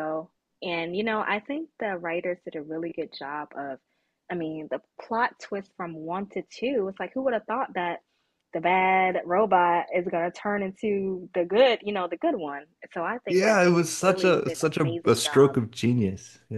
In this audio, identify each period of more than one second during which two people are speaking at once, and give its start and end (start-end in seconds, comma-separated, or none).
13.3-15.6